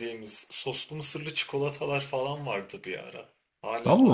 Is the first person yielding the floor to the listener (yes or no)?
no